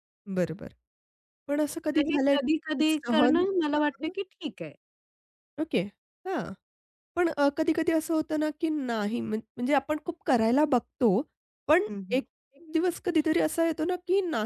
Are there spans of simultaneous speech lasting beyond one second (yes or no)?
yes